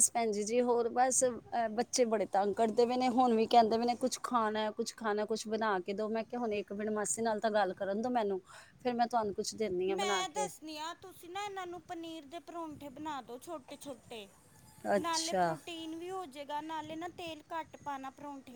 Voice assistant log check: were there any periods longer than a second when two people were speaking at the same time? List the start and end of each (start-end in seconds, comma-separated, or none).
none